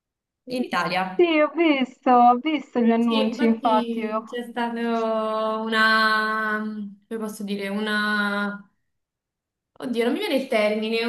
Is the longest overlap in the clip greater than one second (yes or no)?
yes